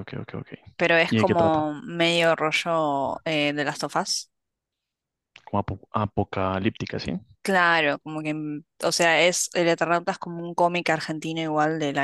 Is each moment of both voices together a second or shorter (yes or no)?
yes